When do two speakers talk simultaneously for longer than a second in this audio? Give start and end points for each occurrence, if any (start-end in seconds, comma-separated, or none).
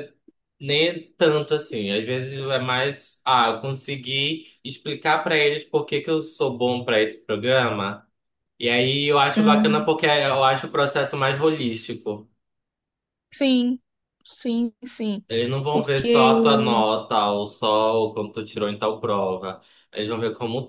none